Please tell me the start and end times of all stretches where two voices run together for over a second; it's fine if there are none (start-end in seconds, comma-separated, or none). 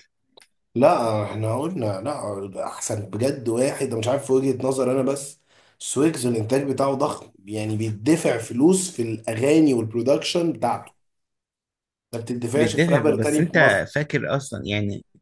12.5-13.8